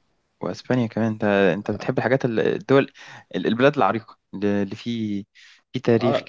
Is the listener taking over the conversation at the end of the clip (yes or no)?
yes